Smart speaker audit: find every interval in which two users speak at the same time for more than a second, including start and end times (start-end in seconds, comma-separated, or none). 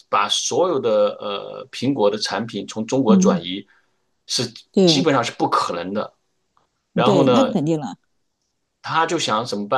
none